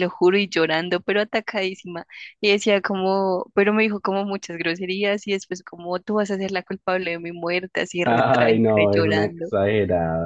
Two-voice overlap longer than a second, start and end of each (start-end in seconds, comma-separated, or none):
8.0-9.5